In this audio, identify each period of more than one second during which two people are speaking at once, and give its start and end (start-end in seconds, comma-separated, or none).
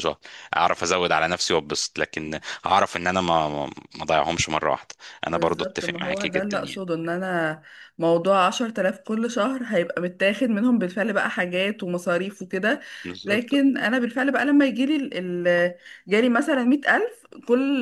5.3-6.8